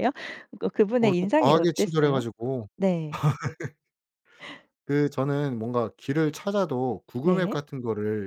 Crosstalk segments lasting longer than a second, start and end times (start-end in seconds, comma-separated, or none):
1.0-2.2